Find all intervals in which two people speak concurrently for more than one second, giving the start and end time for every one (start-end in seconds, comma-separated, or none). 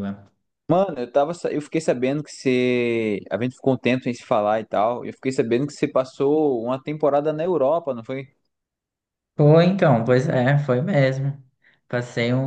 none